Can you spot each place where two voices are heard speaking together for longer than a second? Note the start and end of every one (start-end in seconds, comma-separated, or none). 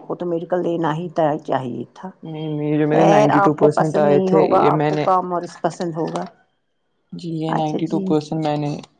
2.9-5.0